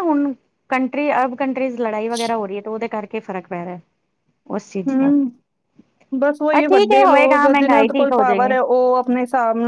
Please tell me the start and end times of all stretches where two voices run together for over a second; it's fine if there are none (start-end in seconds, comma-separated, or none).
6.5-8.6